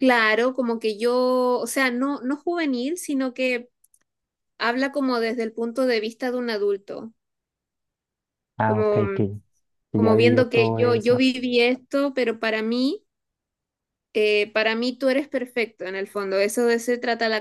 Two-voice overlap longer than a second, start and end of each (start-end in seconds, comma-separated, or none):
9.9-11.2